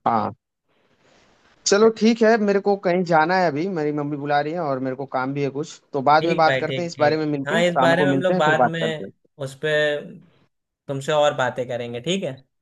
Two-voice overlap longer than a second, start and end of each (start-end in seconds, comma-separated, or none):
6.2-9.1